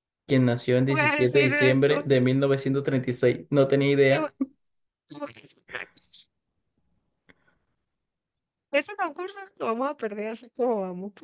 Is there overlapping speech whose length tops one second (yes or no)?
yes